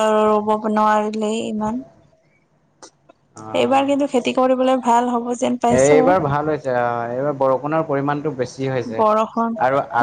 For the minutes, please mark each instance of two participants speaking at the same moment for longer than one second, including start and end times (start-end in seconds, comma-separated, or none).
none